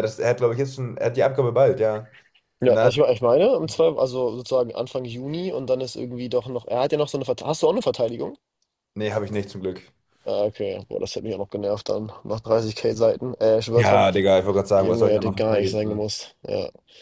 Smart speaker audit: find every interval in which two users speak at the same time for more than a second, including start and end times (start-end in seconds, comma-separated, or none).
14.8-16.0